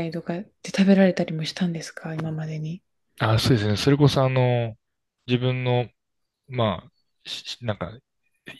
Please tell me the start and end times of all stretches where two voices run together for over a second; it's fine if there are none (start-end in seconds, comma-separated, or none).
none